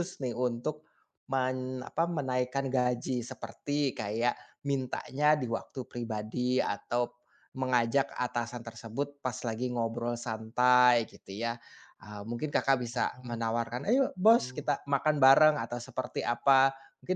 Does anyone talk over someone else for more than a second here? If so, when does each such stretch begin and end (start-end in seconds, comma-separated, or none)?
12.9-14.8